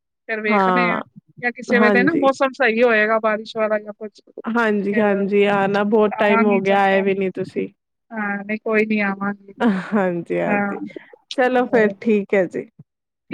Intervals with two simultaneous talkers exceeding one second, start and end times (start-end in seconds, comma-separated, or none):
4.5-6.8